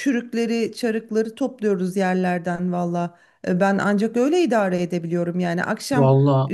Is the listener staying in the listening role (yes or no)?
yes